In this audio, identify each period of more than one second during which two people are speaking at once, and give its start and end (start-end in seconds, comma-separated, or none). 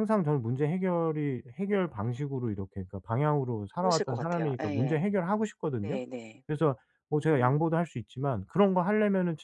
3.7-5.0